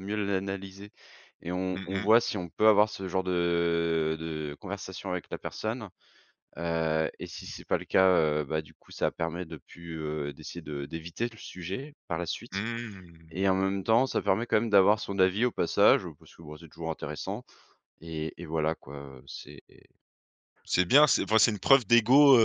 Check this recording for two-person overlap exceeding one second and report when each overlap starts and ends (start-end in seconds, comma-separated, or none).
none